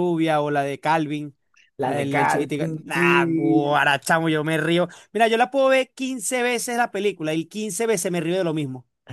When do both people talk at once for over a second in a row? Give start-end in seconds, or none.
1.8-3.7